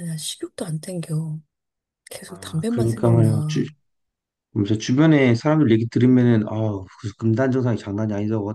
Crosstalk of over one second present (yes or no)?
yes